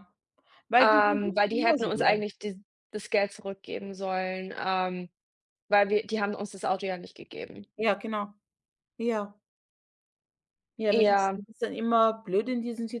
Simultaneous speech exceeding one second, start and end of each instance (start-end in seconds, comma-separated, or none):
0.8-2.1